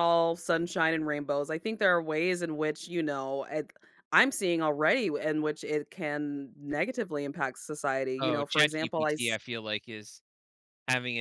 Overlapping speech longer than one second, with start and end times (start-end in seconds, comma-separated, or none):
8.2-9.4